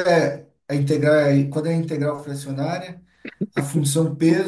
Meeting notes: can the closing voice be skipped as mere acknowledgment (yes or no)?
yes